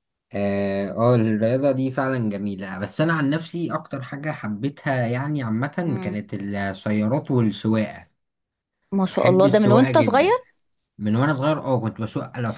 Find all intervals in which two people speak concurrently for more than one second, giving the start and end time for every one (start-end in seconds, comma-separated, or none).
9.1-10.3